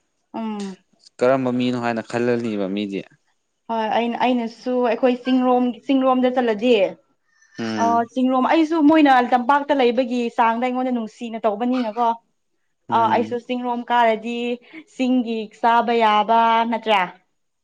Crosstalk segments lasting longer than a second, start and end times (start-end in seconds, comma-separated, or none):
none